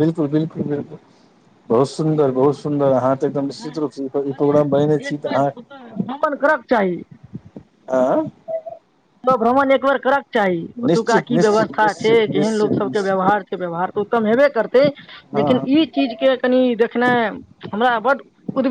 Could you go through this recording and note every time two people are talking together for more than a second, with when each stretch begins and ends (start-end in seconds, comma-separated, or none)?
10.8-13.3